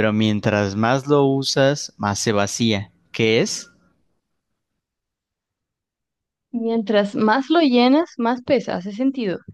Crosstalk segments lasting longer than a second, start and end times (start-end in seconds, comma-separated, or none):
none